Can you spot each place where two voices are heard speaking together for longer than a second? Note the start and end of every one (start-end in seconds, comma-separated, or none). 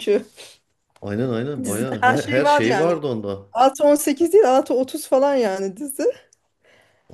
1.6-3.0